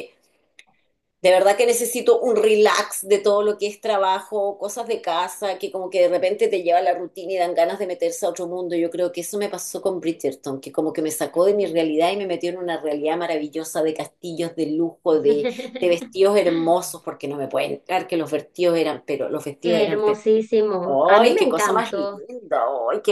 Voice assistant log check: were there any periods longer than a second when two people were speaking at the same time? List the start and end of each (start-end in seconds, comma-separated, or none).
20.8-22.2